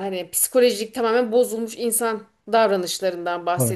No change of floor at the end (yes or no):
yes